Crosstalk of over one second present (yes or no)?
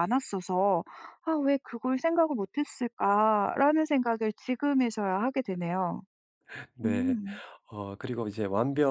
no